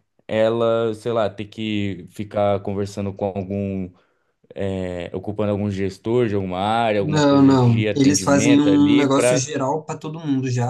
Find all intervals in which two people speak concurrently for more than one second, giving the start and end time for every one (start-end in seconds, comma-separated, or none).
7.0-9.5